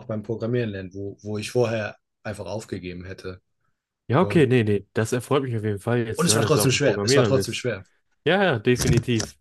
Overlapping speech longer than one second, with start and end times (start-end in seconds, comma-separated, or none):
6.2-7.6